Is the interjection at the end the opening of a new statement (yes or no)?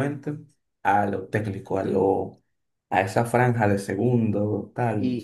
yes